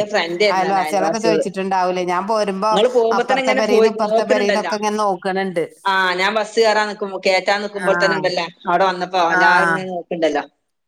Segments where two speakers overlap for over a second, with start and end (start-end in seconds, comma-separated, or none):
none